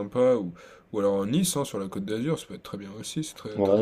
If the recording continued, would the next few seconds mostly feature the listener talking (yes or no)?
yes